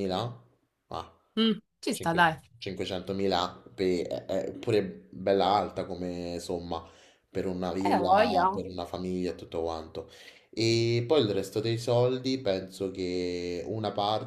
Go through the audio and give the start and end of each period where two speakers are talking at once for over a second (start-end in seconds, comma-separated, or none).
none